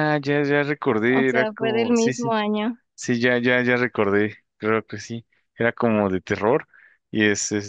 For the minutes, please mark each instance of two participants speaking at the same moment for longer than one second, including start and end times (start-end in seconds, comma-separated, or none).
1.1-2.4